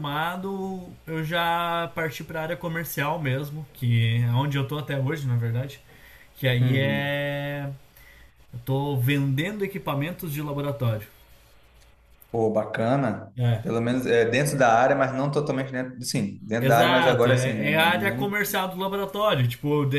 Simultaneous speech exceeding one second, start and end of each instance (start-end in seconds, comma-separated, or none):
16.6-18.3